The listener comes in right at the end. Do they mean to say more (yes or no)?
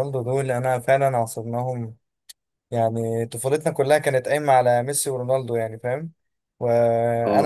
no